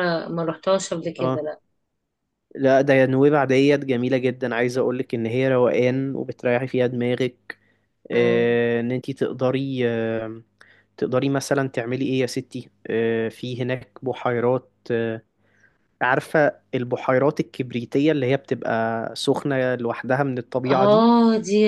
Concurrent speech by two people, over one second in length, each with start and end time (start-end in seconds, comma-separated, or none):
none